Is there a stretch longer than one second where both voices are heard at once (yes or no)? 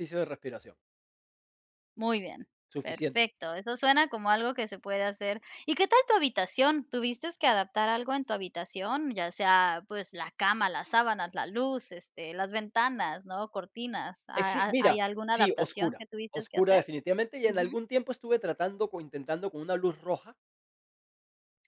yes